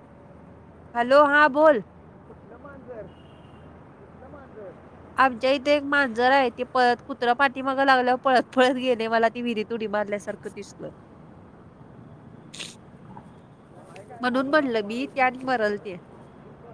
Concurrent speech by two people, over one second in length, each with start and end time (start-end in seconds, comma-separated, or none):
14.2-15.9